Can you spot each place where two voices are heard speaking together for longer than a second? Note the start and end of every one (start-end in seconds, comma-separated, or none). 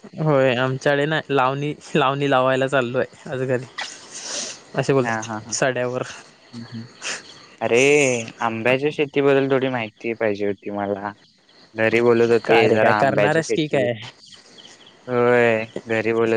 12.4-13.9